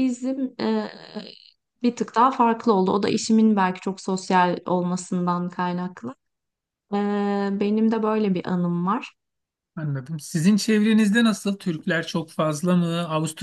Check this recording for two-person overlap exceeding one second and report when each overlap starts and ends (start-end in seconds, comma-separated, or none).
none